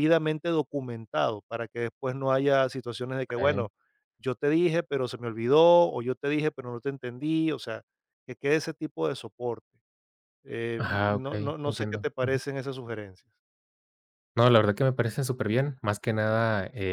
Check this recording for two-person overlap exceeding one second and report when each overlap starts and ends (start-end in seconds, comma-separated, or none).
10.8-12.4